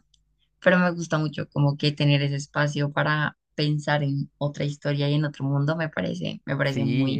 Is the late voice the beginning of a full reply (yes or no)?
yes